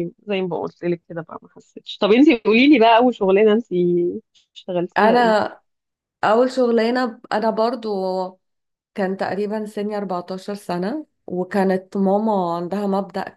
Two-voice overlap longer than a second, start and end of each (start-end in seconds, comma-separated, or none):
none